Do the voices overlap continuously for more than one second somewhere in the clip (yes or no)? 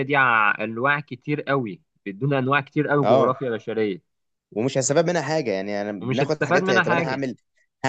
yes